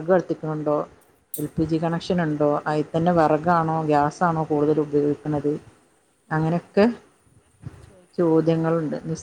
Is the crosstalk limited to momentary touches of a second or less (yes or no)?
yes